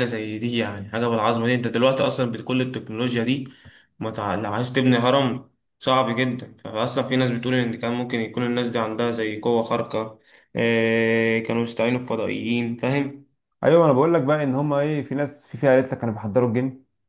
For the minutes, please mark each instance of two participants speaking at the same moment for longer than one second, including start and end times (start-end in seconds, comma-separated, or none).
none